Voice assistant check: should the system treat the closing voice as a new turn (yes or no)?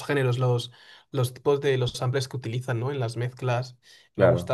no